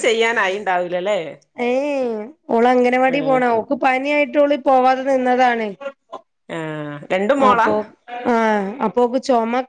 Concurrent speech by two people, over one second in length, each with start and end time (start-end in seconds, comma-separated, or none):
none